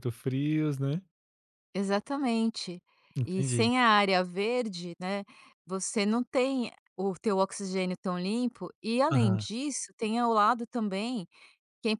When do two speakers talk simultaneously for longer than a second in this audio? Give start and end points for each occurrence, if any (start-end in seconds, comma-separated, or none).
none